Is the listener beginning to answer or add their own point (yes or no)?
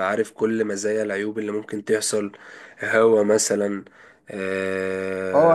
yes